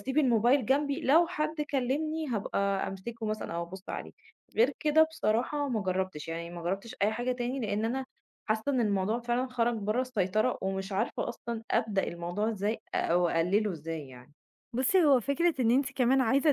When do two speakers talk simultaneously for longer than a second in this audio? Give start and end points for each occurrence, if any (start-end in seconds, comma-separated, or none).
none